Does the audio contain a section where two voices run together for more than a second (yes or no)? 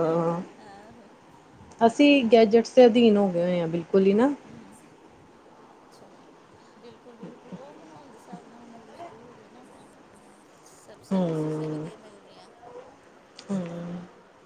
no